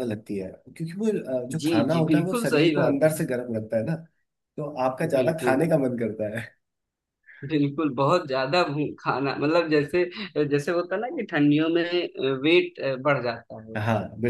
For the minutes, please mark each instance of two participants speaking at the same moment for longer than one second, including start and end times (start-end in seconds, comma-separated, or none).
1.5-3.1